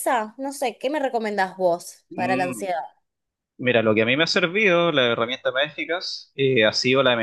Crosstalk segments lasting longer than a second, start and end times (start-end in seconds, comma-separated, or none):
none